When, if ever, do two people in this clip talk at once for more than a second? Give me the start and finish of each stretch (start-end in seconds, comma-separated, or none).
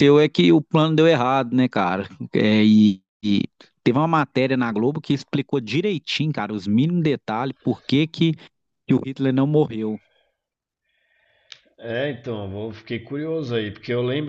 none